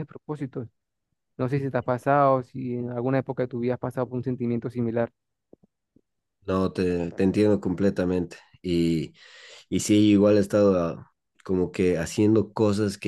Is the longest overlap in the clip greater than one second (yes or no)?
no